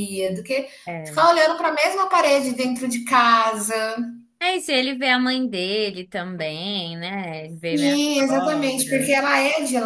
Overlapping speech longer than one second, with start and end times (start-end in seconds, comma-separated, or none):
7.7-9.1